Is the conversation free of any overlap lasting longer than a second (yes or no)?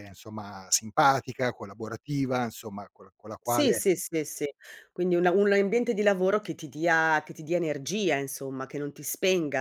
yes